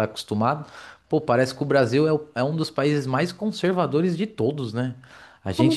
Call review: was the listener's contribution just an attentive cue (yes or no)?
yes